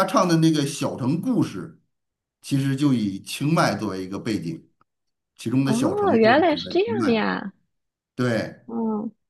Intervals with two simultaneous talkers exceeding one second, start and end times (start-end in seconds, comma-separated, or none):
5.6-7.3